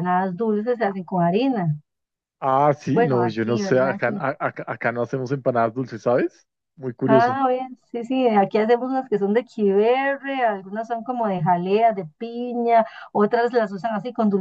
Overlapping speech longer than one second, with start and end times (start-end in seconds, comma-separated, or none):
2.9-4.1